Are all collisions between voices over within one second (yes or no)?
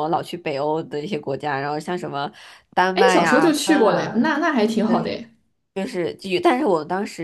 no